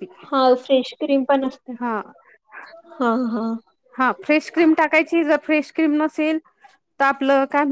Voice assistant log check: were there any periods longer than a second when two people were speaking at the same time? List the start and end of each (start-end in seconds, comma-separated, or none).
none